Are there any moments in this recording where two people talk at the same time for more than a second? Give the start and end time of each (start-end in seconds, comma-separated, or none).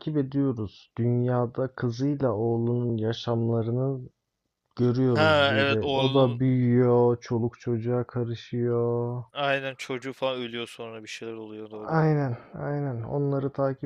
5.1-6.4